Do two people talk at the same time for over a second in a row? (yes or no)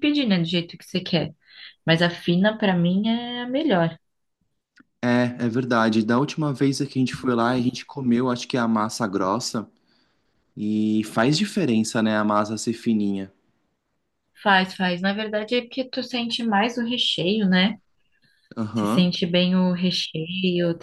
no